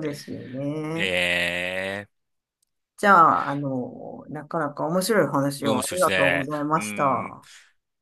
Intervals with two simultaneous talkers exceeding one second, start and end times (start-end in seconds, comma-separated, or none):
5.6-7.4